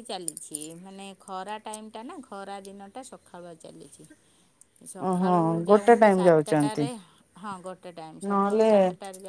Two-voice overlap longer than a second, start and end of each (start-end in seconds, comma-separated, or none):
5.1-6.8